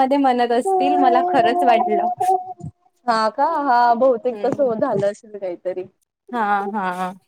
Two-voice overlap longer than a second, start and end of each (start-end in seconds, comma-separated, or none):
0.6-2.1